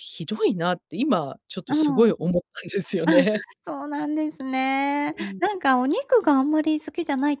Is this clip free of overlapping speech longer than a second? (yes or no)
yes